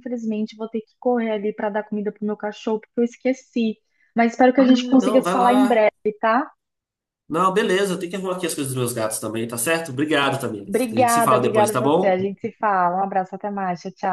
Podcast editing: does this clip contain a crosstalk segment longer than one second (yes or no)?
yes